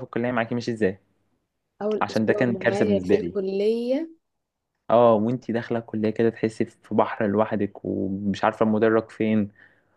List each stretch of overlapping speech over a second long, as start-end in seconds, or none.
2.0-3.4